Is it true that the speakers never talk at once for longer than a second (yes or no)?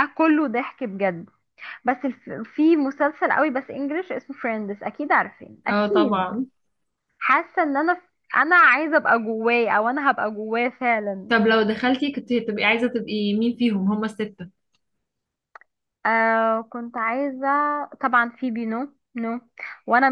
yes